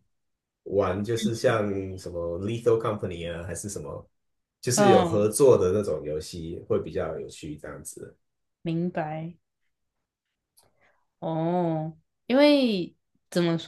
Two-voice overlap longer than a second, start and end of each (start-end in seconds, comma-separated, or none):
none